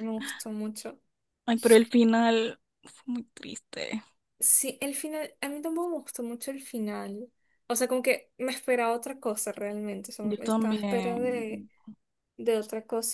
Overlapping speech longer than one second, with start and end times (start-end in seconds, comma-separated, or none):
10.3-11.6